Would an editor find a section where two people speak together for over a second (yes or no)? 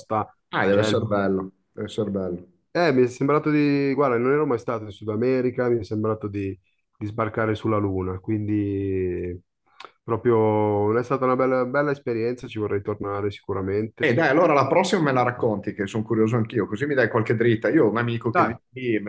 no